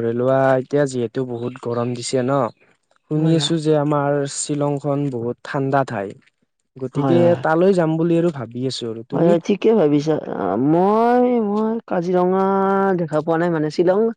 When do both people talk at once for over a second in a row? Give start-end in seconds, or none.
none